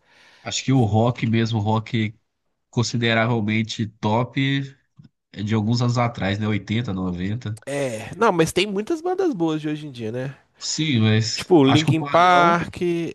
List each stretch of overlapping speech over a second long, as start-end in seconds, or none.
11.3-12.6